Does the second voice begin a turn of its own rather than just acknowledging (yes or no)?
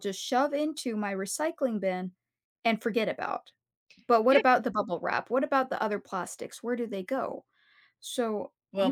yes